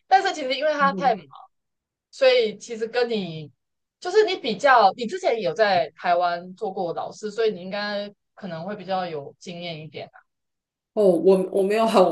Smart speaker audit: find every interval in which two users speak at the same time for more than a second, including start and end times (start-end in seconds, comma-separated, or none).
none